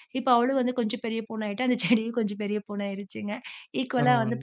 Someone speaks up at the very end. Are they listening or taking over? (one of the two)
listening